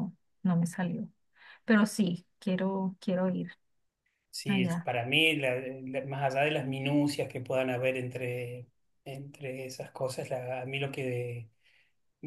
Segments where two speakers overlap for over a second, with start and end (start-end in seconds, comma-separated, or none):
none